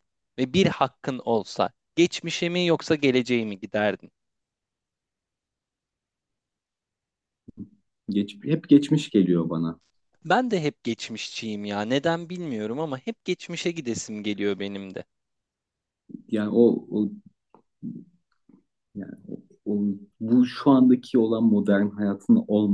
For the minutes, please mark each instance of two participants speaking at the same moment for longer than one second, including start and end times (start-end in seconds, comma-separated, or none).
none